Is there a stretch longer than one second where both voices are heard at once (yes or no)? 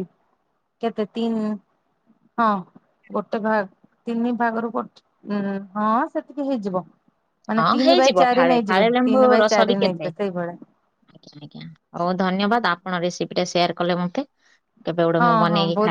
yes